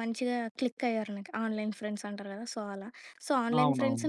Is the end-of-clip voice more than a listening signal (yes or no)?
no